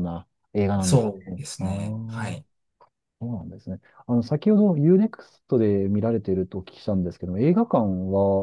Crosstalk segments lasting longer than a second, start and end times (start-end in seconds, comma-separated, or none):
0.8-2.4